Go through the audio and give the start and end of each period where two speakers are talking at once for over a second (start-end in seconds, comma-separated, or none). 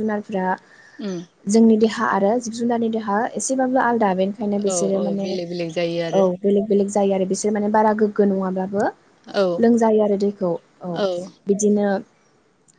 none